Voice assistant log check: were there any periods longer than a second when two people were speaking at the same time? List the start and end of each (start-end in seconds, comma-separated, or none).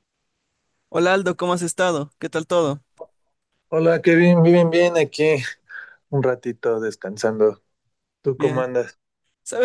none